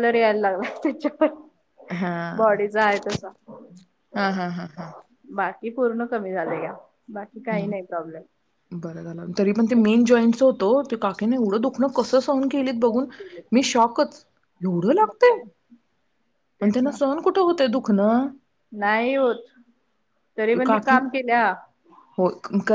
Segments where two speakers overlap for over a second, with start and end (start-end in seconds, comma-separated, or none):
none